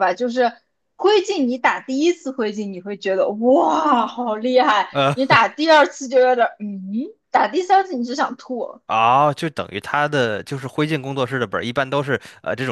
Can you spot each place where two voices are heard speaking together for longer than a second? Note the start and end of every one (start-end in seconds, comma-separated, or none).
none